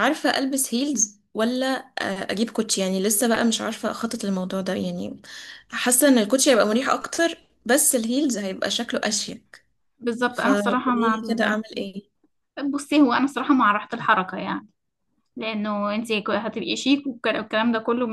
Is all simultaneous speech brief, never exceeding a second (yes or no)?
no